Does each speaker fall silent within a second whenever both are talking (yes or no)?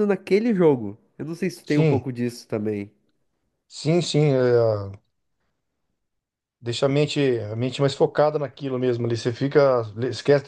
yes